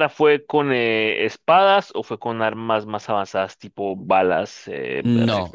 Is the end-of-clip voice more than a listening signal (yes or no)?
yes